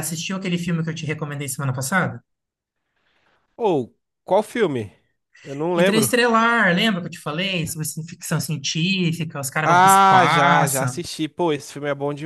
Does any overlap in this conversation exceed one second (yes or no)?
yes